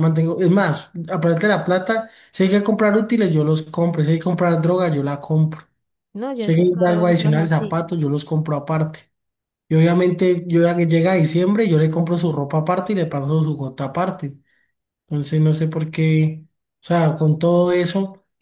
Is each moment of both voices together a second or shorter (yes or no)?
no